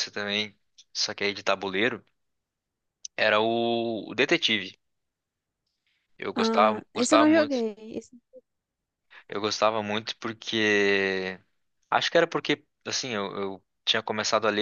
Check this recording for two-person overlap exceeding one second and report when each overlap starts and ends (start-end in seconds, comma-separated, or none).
6.3-7.6